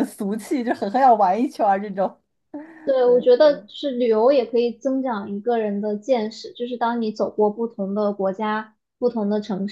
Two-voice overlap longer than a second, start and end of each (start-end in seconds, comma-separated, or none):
none